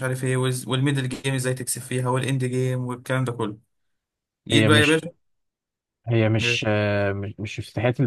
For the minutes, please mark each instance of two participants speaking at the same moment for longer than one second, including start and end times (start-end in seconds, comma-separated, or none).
none